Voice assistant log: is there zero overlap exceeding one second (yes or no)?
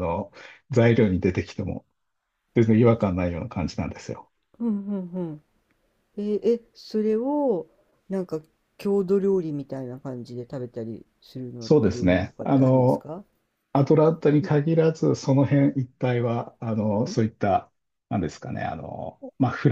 no